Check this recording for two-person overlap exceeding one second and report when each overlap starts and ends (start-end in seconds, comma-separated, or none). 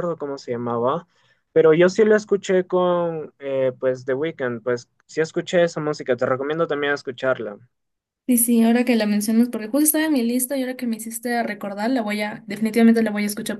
none